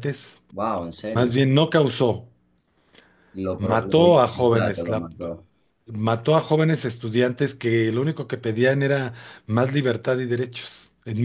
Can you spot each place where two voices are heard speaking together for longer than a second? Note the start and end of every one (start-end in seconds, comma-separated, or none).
3.6-5.1